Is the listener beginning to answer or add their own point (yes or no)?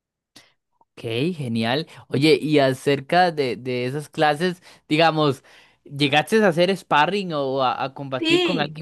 yes